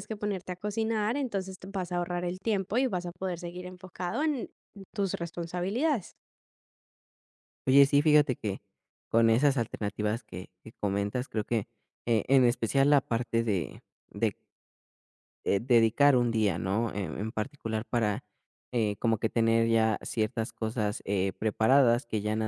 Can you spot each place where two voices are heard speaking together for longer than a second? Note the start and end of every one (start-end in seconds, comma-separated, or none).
none